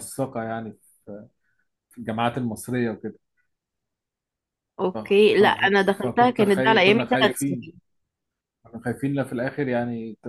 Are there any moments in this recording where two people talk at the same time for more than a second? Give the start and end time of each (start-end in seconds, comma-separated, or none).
4.9-7.7